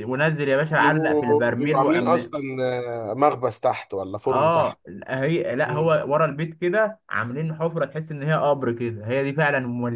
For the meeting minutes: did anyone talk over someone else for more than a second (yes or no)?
yes